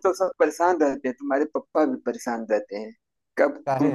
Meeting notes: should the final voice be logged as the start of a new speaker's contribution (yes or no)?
no